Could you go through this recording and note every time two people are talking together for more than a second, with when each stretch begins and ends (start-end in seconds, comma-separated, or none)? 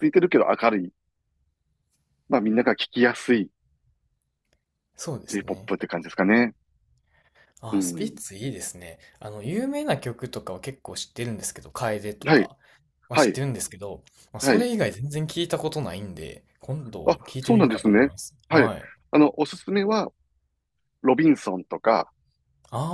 17.0-18.7